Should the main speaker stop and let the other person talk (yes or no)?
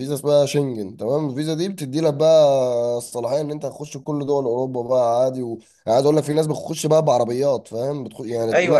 yes